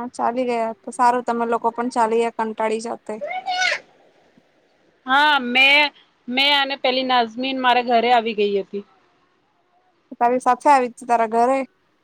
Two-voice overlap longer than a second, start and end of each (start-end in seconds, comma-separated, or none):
none